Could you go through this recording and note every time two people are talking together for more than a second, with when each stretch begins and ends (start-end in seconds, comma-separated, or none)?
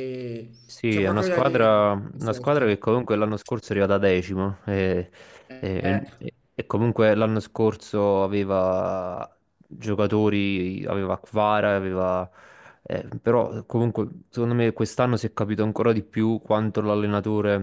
0.9-2.7